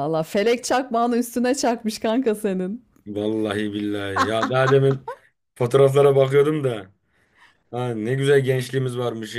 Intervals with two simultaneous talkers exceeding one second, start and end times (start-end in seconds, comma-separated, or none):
none